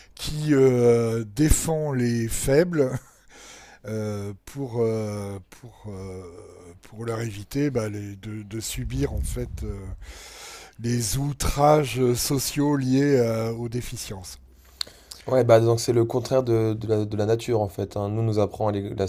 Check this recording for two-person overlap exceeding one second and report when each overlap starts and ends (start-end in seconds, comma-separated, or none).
none